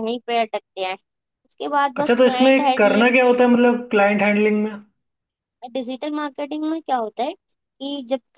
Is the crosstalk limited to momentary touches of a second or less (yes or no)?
no